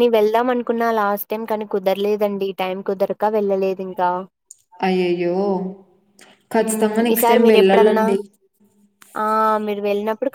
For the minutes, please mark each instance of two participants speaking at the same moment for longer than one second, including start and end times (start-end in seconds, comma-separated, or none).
6.6-8.1